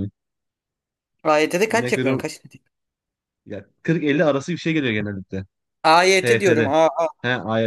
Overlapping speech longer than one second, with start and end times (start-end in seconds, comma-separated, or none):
none